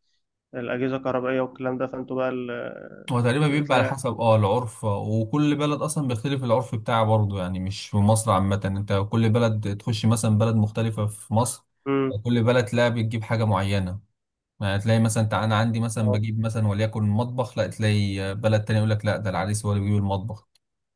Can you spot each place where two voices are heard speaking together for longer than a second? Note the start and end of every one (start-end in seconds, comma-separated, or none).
none